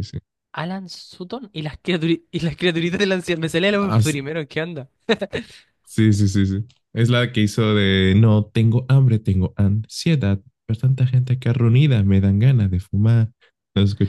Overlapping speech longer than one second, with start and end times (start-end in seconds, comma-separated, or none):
none